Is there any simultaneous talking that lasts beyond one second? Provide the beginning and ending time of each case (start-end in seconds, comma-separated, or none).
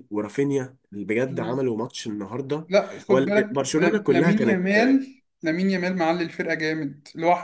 3.1-4.7